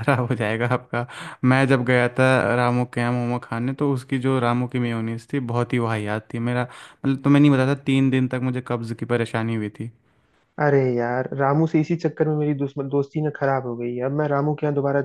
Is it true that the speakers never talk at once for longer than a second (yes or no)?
yes